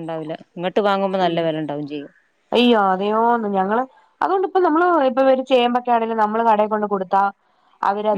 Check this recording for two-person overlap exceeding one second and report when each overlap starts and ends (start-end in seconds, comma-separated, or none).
none